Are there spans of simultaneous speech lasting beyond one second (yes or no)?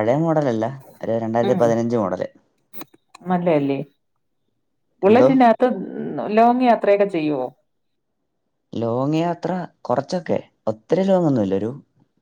no